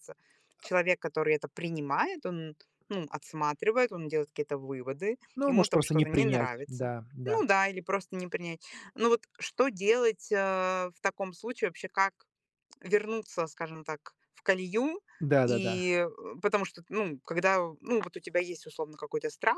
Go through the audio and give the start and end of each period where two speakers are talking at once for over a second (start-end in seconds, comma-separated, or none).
5.3-7.4